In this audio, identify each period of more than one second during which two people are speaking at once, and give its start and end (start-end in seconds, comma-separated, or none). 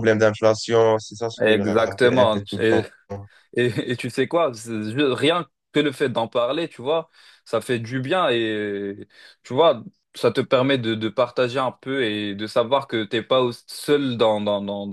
1.4-2.8